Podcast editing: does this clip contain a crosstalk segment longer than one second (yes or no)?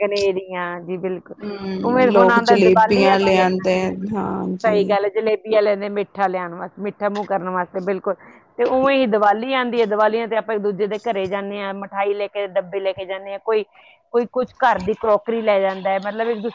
yes